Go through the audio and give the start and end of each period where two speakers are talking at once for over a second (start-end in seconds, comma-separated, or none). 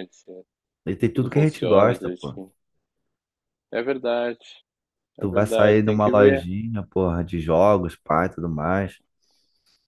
1.1-2.4, 5.2-6.5